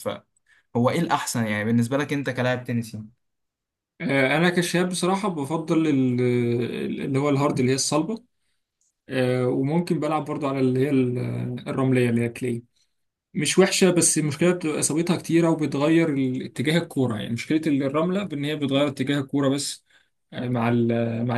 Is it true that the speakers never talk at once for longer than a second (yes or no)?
yes